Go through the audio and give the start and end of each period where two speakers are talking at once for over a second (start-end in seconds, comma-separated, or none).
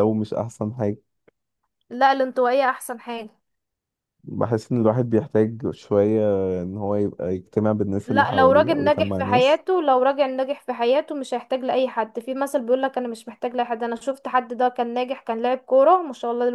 8.1-9.6